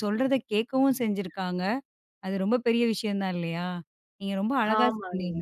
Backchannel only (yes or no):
yes